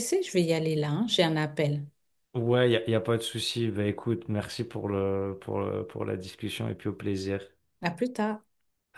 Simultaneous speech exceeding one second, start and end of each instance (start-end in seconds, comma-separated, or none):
none